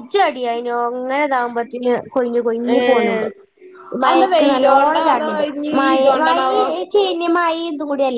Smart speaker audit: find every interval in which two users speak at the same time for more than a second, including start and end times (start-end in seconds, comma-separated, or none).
4.1-6.4